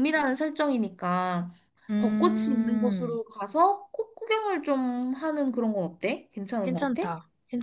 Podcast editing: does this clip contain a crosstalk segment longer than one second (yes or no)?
yes